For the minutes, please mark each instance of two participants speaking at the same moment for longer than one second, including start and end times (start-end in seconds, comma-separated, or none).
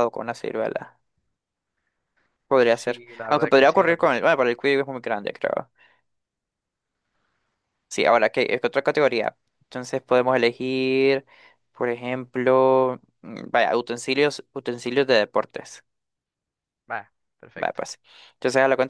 2.8-4.3